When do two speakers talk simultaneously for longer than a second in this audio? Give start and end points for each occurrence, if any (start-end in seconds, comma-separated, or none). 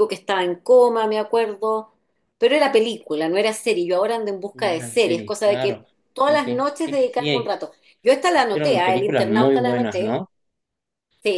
4.5-7.5, 8.2-10.2